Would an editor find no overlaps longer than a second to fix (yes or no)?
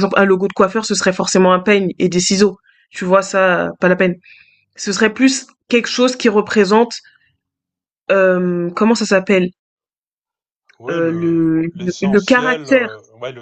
no